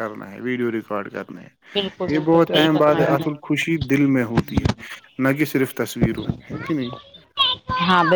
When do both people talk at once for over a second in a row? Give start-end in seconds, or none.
1.7-3.9